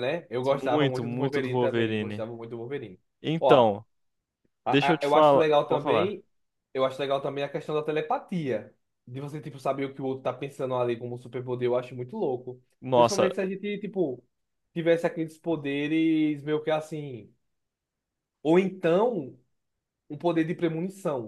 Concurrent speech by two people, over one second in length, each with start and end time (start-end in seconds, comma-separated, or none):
0.5-2.2, 4.7-6.2